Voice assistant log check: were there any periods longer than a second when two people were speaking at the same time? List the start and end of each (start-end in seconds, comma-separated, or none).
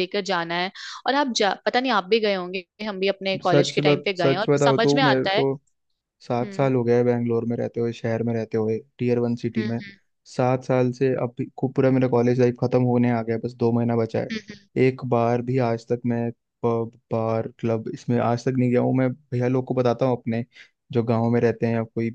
3.4-5.4